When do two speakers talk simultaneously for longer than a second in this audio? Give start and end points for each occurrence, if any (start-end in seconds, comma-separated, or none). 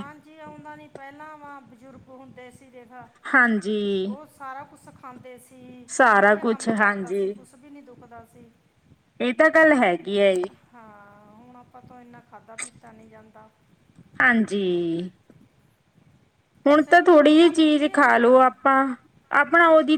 16.7-18.4